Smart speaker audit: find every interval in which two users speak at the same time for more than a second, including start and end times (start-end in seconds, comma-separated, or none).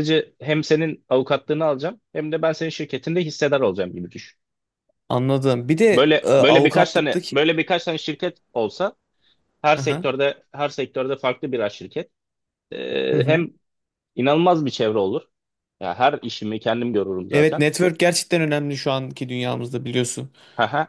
5.9-7.5